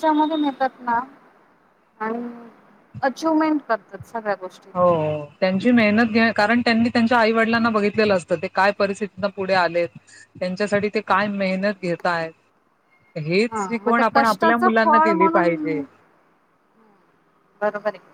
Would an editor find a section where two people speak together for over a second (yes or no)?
yes